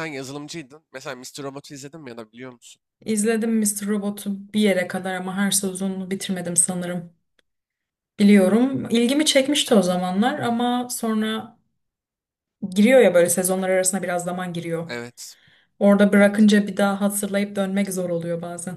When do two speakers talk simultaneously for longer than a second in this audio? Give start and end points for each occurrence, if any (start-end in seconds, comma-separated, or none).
none